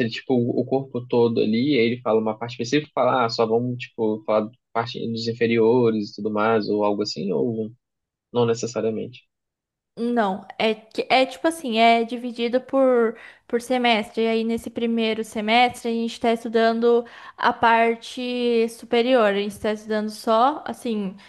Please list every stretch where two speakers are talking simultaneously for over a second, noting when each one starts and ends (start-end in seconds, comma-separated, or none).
none